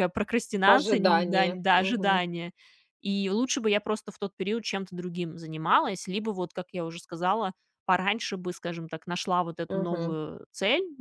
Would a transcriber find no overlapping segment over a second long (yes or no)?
no